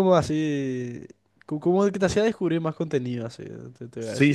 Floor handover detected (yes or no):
yes